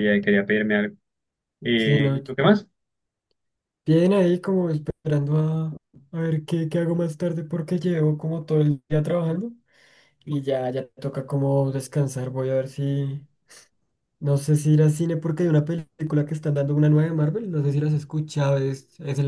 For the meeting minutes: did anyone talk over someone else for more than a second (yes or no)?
no